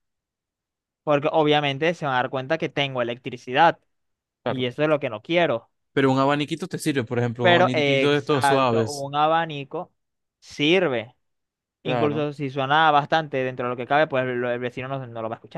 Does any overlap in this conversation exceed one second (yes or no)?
yes